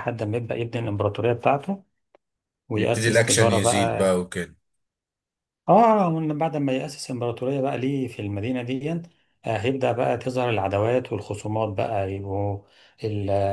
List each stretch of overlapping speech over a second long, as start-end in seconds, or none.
2.8-4.1